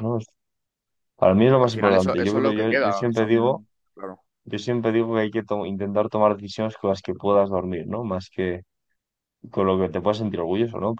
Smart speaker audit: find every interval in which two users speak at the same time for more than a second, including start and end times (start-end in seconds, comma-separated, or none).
1.6-3.6